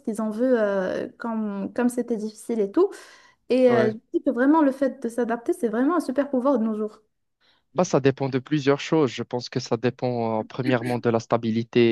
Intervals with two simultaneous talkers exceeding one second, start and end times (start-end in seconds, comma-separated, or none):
none